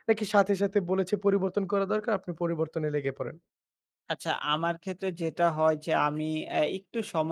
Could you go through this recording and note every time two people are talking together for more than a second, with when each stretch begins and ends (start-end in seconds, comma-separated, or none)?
none